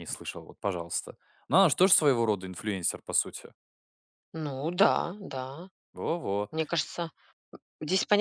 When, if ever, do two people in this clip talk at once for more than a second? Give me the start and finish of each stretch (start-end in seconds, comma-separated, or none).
none